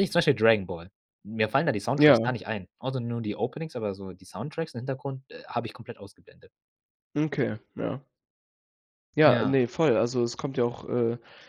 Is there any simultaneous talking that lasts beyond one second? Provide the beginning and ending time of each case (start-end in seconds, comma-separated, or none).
none